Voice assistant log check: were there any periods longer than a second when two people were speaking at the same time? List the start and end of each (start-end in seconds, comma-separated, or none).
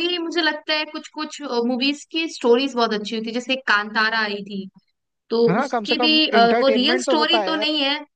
5.5-7.7